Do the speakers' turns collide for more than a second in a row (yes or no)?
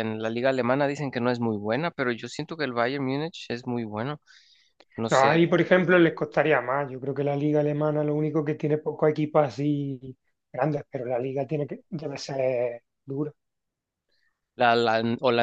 no